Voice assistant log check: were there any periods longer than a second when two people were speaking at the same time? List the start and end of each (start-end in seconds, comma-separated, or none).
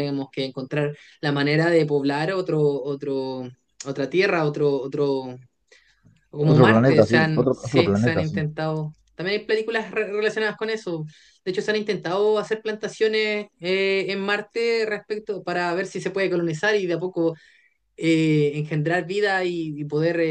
6.4-8.4